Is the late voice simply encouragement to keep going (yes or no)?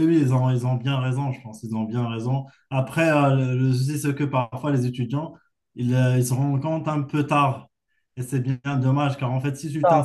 yes